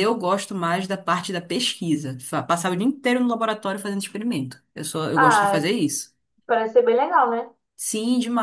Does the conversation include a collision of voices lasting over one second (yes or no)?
no